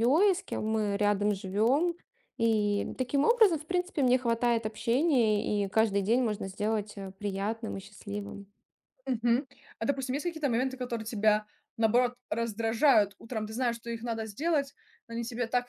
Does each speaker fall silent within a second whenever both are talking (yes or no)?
yes